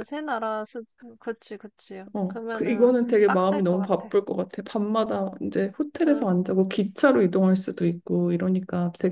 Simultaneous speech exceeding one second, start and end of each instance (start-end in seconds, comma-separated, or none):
2.1-4.1